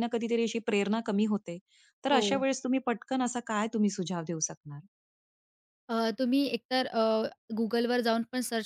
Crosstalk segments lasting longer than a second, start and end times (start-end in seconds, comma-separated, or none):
none